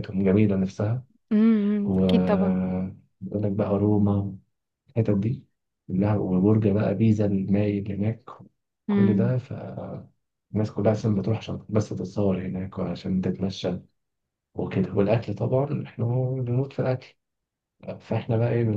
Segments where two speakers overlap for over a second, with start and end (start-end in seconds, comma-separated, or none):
none